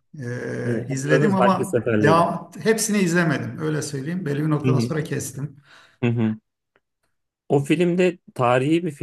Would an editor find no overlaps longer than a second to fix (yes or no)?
no